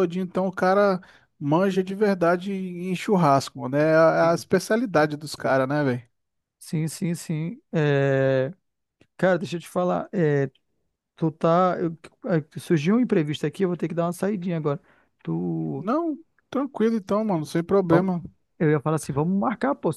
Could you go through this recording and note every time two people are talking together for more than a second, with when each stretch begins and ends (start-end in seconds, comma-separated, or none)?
none